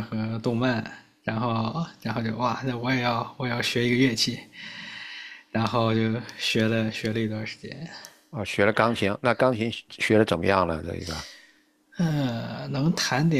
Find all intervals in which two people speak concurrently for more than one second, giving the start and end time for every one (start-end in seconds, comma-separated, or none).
none